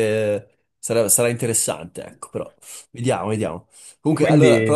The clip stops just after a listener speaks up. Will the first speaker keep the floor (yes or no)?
yes